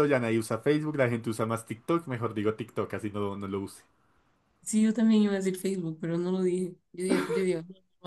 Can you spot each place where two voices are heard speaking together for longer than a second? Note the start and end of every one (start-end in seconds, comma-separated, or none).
none